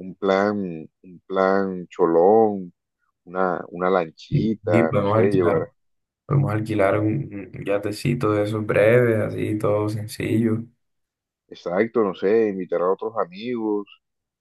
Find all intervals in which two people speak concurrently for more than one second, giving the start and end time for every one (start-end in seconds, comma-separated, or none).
4.3-5.7